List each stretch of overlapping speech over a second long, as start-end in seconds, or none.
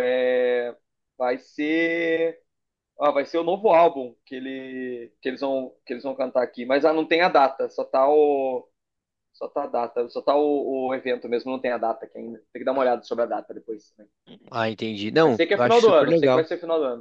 15.2-16.5